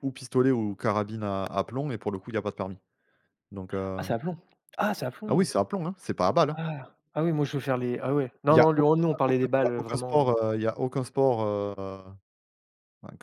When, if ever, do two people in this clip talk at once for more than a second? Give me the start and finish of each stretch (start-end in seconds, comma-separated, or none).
8.5-10.3